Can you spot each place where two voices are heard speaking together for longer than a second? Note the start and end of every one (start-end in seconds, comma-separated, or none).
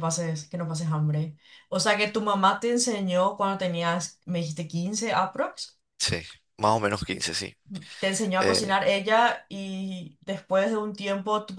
none